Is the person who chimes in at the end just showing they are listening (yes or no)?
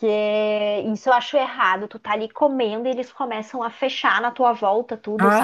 no